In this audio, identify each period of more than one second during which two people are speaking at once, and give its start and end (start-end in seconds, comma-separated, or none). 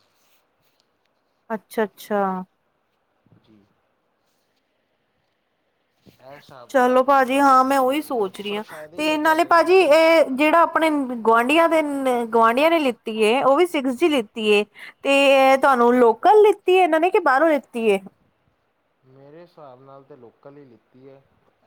6.7-9.9